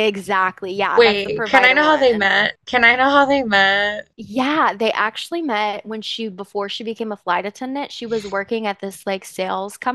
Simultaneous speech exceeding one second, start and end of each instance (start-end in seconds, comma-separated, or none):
0.9-2.3